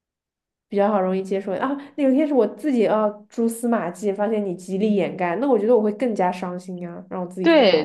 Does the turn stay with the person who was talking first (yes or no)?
no